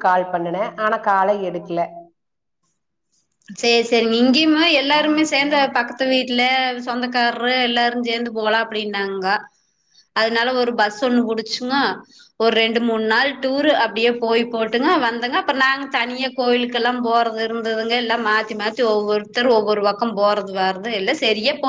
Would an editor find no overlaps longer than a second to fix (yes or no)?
yes